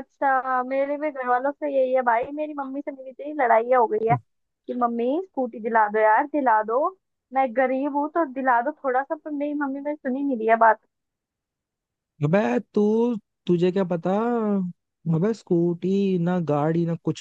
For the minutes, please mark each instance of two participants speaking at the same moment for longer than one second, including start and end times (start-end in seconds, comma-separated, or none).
none